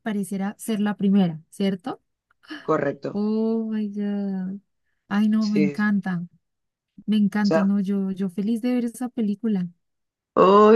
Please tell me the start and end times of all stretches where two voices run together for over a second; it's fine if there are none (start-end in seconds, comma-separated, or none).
none